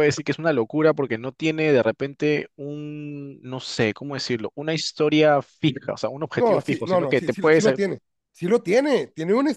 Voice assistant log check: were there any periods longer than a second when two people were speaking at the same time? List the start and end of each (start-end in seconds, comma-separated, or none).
6.3-7.7